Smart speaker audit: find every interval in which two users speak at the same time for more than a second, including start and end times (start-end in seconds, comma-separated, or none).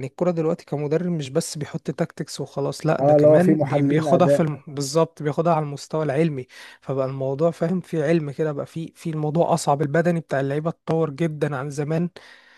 3.0-4.6